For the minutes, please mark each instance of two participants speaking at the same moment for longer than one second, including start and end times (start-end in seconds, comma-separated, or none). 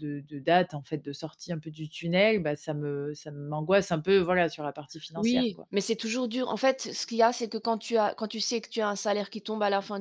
none